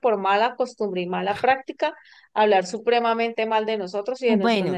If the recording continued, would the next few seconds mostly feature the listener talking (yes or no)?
yes